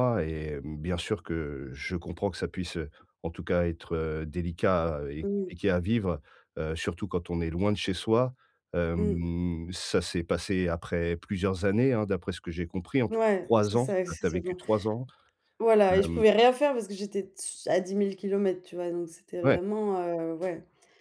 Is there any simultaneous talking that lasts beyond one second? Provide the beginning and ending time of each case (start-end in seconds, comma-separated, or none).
13.1-14.6